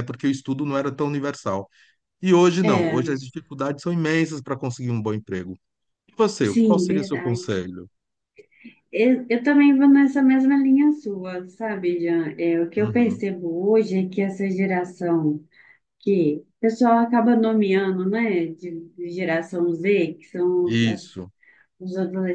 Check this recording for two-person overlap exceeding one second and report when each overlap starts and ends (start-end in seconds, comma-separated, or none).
6.4-7.7